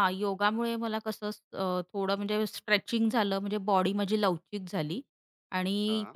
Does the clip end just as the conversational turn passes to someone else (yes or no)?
no